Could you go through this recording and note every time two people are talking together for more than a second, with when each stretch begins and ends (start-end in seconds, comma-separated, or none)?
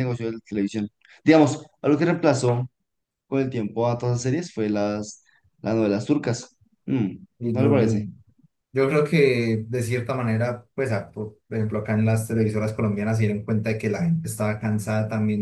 none